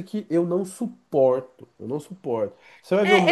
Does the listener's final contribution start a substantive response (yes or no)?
yes